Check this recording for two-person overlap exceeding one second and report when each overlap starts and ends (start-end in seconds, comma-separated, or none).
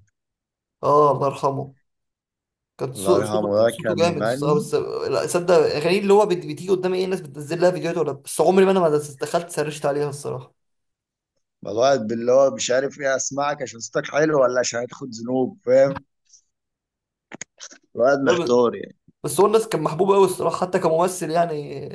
2.9-4.6